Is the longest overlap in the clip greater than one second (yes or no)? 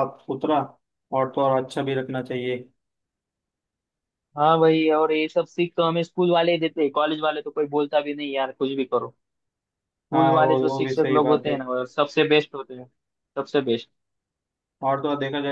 yes